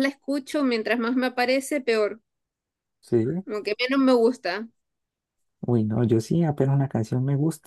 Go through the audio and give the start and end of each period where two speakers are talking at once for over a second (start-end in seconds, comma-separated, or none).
none